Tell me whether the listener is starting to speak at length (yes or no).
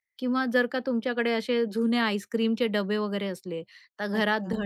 no